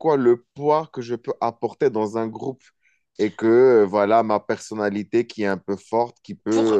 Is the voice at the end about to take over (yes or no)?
no